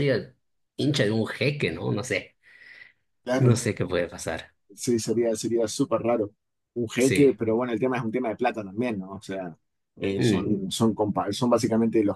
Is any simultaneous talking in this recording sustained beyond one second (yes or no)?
no